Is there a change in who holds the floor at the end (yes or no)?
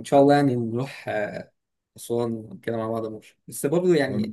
no